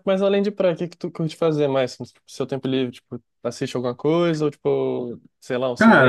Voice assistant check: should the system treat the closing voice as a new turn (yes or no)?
yes